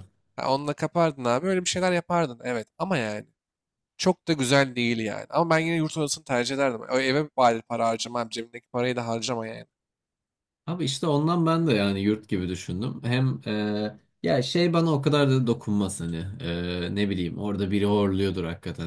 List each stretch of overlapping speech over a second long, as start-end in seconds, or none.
none